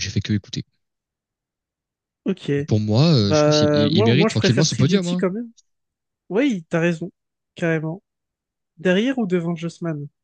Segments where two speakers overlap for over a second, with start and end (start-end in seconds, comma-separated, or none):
3.2-5.2